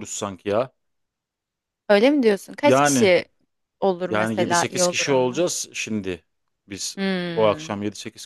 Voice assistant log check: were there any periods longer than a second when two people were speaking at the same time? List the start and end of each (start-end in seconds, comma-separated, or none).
4.1-5.5